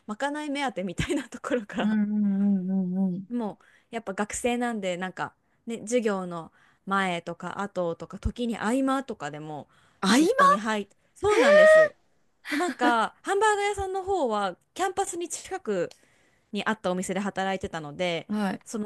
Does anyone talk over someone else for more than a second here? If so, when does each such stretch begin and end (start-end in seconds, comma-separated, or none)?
none